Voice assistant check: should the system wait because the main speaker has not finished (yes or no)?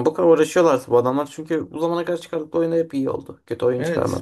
no